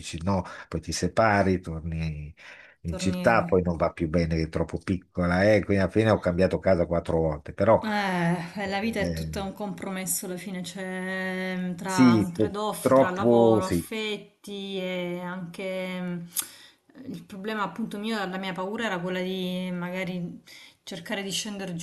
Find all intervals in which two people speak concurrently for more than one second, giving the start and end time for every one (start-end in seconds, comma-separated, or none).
11.8-13.9